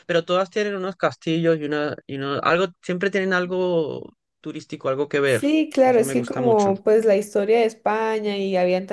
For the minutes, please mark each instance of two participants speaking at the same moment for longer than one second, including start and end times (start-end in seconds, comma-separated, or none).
5.2-6.7